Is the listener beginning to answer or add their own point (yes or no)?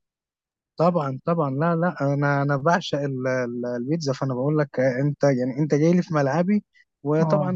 no